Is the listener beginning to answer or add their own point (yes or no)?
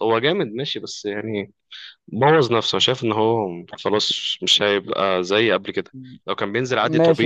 yes